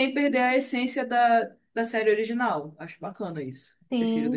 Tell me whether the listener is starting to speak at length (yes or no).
yes